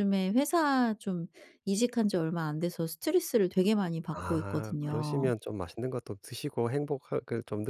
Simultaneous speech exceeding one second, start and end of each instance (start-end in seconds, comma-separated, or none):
4.1-5.3